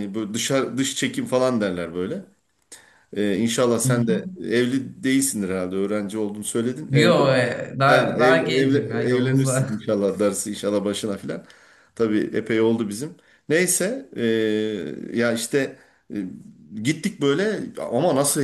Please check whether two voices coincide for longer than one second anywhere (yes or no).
yes